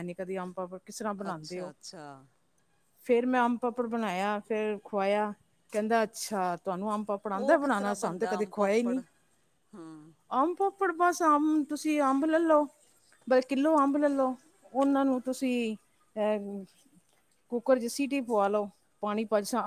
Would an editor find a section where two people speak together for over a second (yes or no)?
yes